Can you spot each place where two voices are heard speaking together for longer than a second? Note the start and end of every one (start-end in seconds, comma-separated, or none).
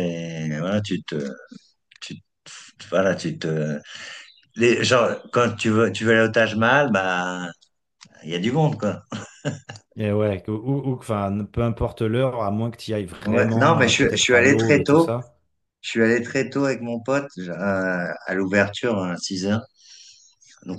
13.2-15.1